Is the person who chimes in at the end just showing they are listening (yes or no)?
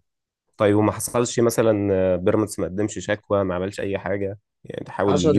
no